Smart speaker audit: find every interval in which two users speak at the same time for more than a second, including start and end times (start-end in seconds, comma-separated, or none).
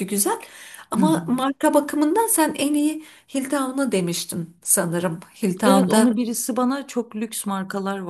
none